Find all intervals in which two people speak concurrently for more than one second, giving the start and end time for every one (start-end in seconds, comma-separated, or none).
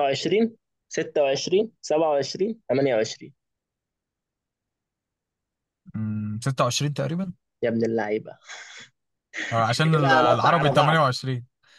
9.7-11.0